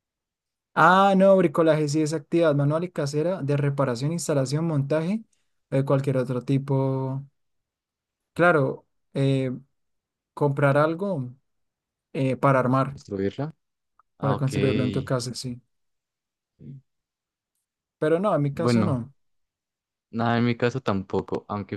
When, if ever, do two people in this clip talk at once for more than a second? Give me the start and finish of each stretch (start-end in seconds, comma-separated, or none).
none